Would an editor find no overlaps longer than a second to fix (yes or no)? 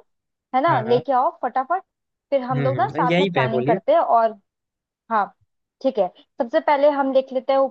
no